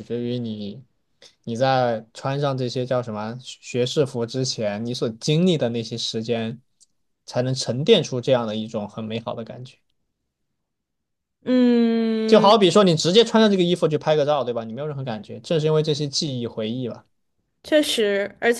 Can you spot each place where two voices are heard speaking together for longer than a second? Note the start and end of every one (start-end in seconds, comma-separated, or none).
none